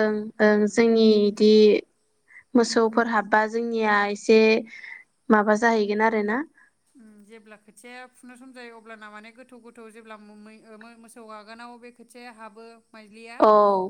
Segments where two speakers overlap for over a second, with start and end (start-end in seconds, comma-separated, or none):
none